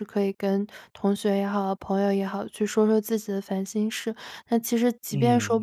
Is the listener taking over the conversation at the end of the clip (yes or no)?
no